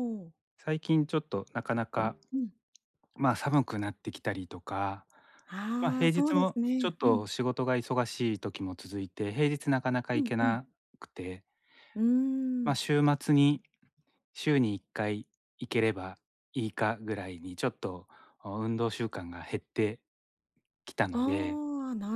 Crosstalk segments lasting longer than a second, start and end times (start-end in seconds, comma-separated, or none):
5.8-7.3